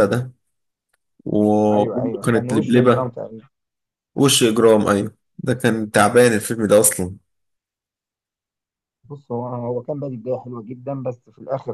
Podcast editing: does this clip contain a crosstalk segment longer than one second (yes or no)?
yes